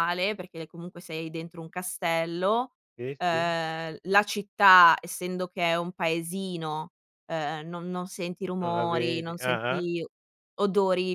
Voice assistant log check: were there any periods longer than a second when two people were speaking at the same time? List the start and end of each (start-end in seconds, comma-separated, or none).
8.6-9.9